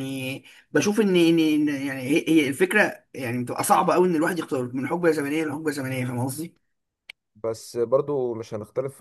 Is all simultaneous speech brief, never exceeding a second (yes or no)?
yes